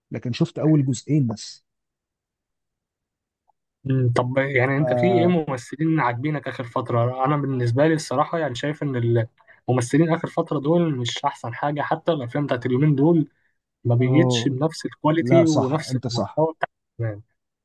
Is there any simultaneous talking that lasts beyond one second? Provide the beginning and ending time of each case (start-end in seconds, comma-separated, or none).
15.2-16.4